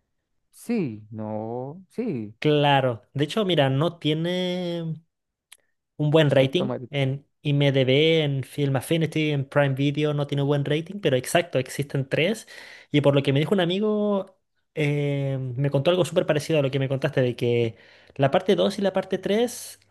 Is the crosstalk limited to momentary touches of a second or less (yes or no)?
yes